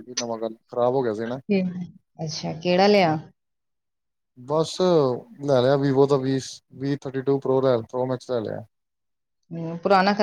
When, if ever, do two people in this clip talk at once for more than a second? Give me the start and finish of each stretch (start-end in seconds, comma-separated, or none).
none